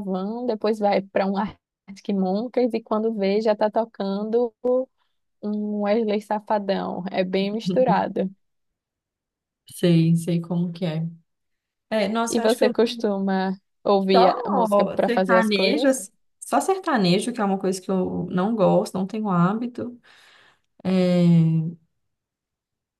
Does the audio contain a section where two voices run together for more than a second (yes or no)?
yes